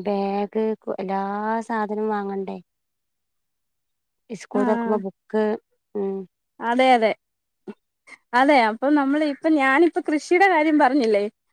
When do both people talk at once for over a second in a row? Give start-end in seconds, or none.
none